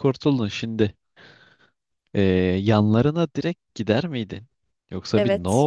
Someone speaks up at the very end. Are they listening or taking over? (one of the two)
listening